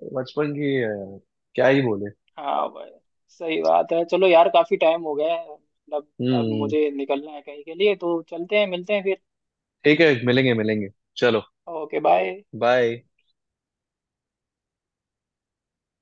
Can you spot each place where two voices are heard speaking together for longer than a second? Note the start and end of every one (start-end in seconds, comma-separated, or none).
none